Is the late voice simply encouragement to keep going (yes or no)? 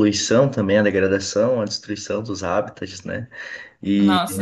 yes